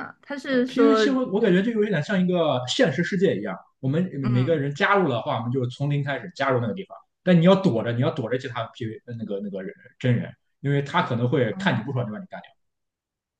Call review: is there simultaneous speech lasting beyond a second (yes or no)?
no